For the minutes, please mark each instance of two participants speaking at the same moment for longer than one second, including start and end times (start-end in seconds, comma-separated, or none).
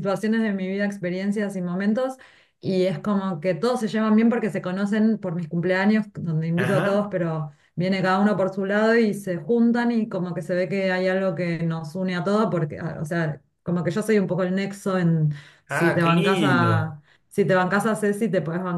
15.7-17.0